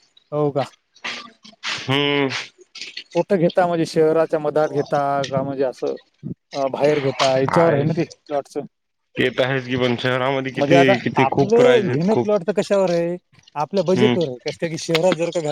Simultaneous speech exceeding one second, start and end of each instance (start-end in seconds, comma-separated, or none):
10.6-12.3